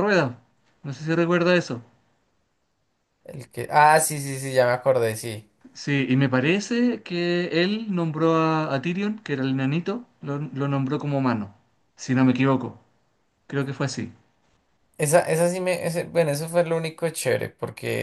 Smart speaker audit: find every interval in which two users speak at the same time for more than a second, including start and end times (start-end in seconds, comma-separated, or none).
none